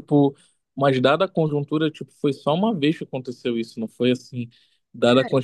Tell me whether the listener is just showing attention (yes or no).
yes